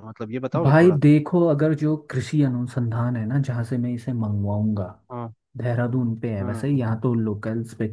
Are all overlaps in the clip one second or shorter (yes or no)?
yes